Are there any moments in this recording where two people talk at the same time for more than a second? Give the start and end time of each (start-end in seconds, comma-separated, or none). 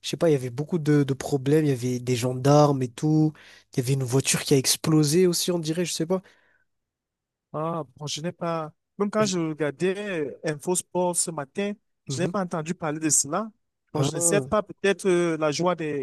none